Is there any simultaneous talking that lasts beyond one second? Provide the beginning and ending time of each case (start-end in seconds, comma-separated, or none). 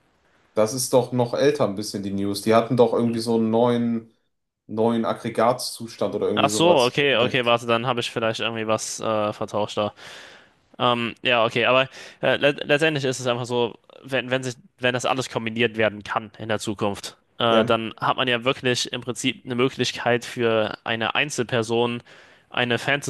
6.3-7.6